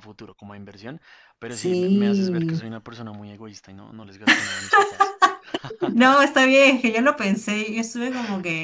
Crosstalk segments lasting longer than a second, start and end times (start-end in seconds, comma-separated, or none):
1.5-2.7